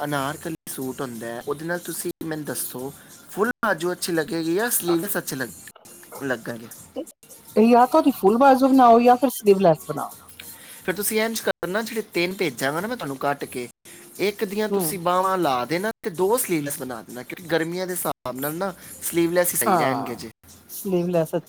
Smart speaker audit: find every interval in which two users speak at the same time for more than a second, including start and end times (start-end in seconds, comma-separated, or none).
none